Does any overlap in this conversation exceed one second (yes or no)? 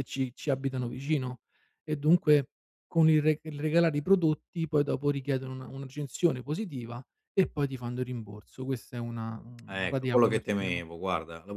yes